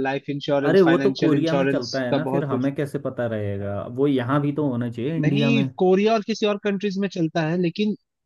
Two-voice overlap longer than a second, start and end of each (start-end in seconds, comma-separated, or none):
0.7-2.7